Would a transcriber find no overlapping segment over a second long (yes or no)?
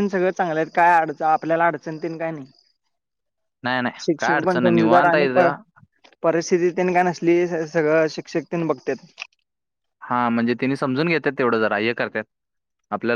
no